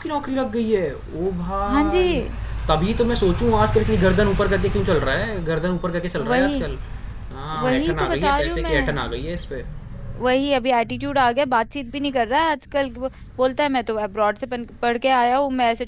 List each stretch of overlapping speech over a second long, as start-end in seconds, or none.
7.6-9.0